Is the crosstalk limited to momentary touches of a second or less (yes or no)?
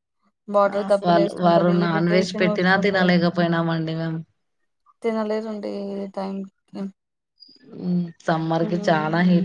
no